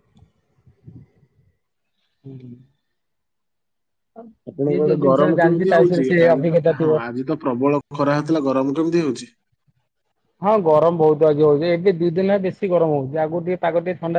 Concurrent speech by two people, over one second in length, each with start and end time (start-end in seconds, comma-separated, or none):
4.7-6.9